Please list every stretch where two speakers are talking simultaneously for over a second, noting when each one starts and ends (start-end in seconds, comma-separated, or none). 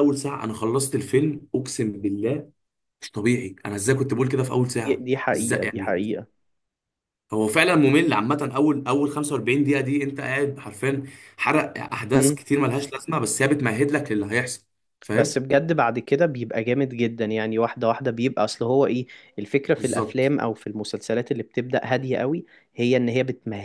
4.6-6.2